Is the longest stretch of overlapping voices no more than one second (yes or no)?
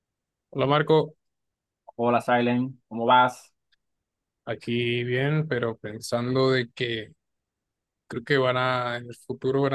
yes